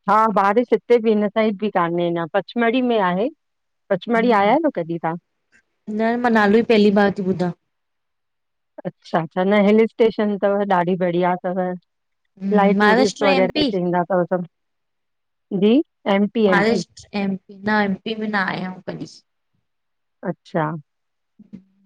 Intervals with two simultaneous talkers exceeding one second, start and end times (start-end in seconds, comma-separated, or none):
12.2-13.7